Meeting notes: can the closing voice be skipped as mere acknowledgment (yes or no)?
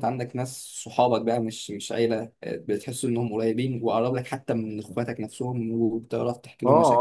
no